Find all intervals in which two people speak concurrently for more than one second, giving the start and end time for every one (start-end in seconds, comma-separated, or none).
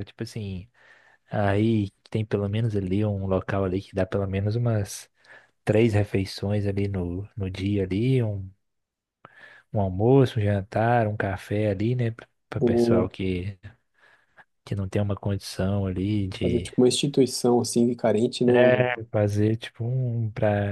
none